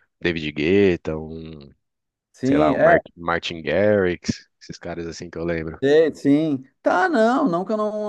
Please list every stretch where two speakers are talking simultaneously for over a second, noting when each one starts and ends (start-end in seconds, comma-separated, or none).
none